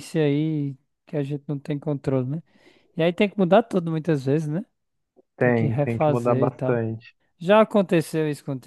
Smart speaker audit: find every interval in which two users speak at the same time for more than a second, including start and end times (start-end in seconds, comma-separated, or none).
5.4-6.8